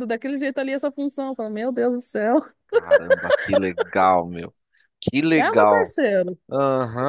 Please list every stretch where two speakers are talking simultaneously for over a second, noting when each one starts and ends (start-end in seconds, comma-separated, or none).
none